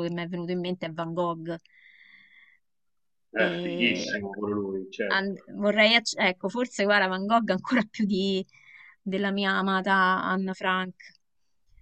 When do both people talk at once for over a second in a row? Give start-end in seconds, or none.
none